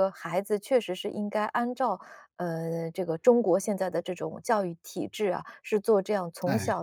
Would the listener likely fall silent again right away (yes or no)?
yes